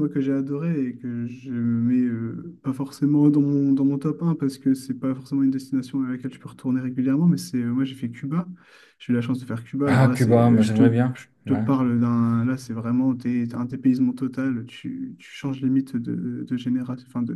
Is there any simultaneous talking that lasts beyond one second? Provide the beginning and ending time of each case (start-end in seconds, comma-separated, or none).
9.8-11.6